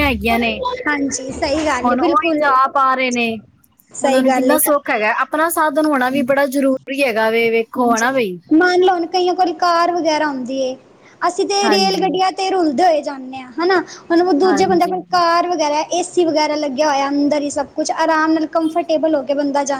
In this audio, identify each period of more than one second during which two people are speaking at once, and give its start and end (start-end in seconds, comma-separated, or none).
none